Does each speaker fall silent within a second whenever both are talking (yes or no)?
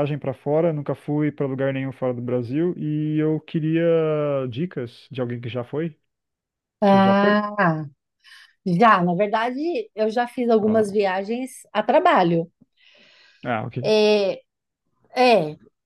yes